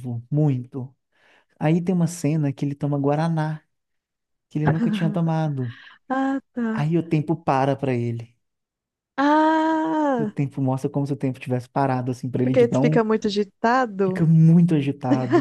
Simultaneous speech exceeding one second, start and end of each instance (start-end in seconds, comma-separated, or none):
none